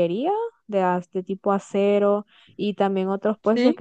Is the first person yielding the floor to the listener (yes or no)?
no